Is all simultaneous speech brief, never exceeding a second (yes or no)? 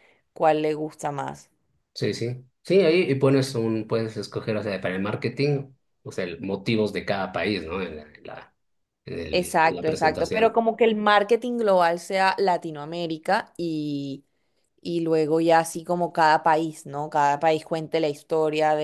no